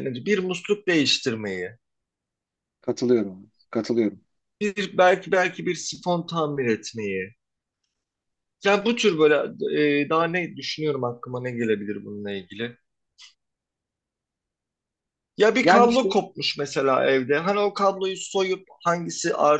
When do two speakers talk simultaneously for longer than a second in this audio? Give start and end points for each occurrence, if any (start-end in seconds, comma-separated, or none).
none